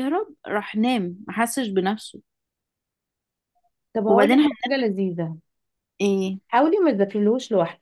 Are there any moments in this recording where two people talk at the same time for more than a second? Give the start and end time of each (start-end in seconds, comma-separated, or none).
none